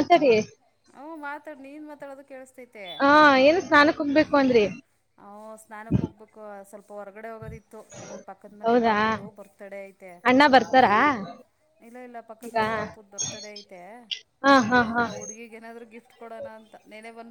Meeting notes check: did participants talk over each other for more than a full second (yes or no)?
no